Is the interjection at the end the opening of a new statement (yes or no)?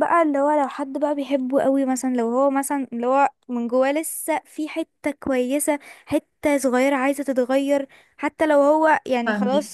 no